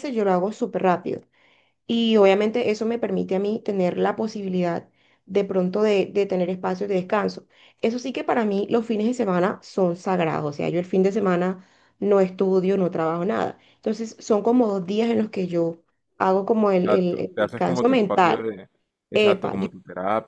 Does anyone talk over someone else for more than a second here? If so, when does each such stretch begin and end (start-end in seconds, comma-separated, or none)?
16.8-18.4